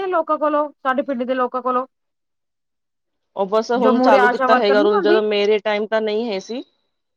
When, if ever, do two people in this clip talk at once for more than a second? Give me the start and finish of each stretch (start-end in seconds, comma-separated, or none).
3.8-5.2